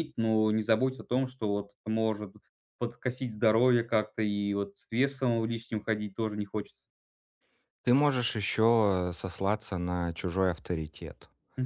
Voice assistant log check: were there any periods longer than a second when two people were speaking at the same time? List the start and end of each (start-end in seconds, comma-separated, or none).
none